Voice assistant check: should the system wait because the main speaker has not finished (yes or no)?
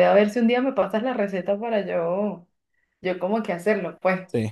no